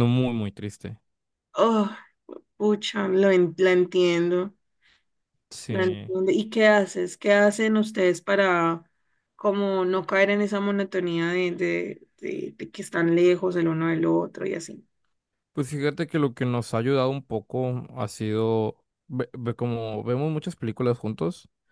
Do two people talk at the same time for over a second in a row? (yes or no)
no